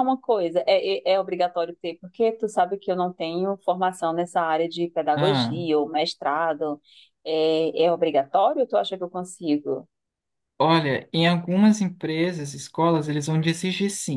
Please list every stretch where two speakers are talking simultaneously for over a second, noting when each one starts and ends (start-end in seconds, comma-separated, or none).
none